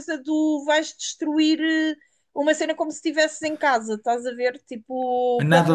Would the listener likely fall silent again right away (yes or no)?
no